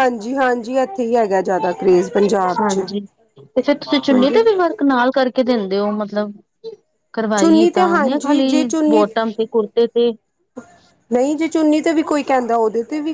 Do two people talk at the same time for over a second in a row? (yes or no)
yes